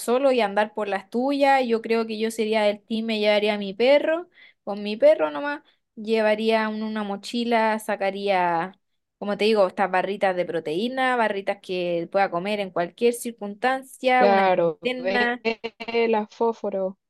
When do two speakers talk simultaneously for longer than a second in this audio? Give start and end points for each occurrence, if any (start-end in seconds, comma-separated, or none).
14.2-15.4